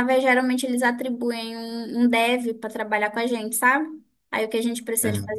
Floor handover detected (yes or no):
no